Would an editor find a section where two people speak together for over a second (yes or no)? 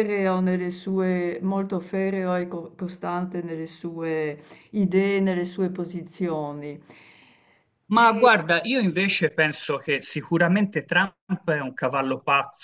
no